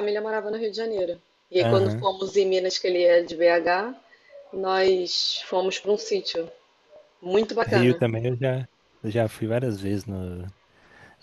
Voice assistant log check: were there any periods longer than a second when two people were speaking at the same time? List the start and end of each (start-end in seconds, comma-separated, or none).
none